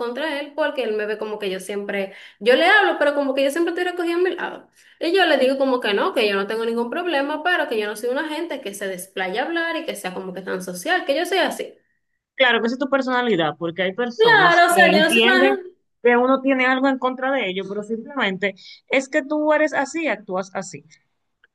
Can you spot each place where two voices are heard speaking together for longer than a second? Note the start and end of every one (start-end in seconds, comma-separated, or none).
14.2-15.6